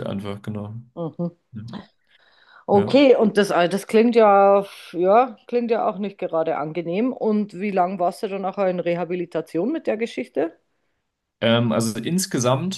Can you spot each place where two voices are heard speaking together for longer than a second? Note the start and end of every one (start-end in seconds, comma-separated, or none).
none